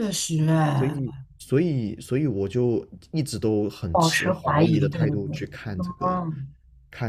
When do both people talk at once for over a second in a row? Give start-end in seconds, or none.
3.9-5.4